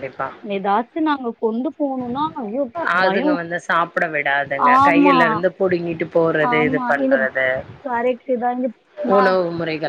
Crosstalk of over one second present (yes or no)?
no